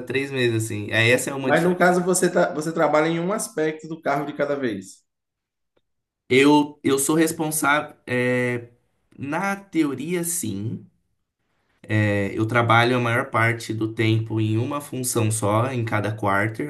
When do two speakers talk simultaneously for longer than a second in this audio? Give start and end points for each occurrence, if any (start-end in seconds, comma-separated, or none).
none